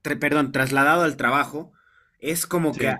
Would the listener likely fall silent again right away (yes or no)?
yes